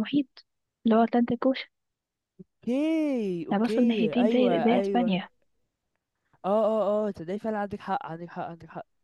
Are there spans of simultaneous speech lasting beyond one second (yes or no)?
yes